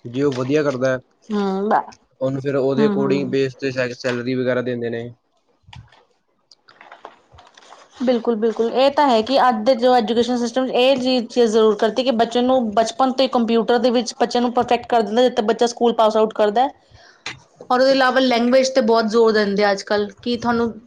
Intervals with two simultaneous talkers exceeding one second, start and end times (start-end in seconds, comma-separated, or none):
none